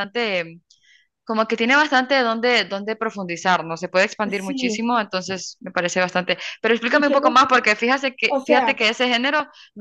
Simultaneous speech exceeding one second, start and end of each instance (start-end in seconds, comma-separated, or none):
none